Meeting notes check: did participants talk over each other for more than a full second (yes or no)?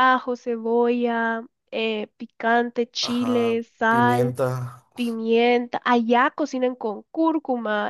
yes